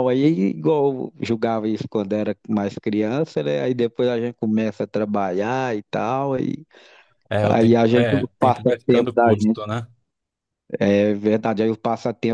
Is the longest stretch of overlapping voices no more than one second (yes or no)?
no